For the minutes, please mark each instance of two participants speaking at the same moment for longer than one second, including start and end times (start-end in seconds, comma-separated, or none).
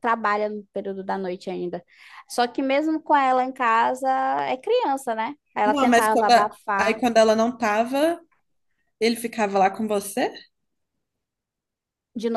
5.6-7.0